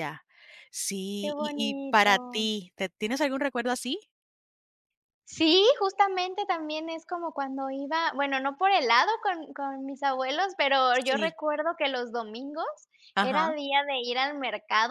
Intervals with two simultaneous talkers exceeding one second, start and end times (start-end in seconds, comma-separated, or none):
1.2-2.5